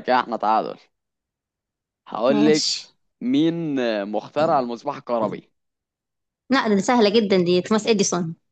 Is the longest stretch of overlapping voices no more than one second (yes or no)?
yes